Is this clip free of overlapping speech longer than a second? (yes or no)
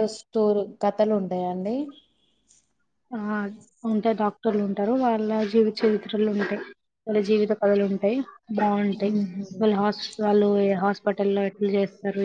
yes